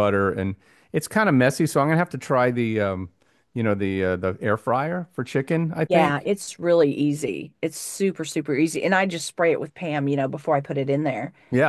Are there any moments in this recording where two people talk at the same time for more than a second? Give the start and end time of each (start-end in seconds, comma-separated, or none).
none